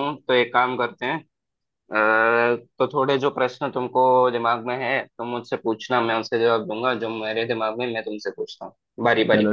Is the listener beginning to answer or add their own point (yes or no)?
yes